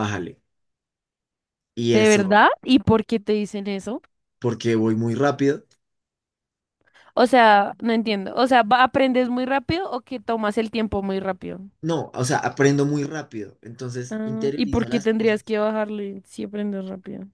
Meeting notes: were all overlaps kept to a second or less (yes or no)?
no